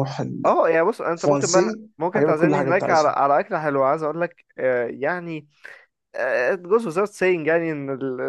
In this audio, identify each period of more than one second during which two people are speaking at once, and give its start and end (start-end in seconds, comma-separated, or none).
1.2-3.1